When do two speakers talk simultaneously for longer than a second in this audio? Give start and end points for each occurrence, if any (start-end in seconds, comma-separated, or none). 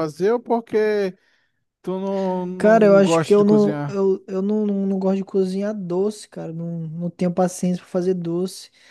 2.6-4.0